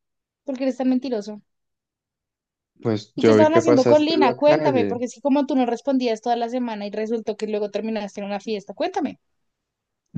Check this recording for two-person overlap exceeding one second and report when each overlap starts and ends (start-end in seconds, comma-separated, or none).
3.1-5.0